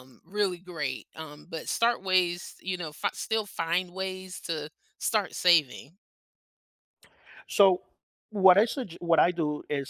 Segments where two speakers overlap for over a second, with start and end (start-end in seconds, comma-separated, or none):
none